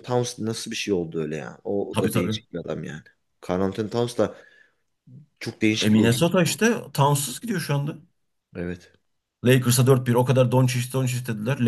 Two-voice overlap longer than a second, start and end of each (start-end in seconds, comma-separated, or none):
none